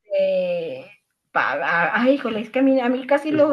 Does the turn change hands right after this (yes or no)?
no